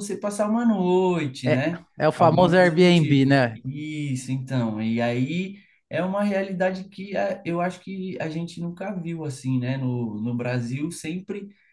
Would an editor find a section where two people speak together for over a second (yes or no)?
yes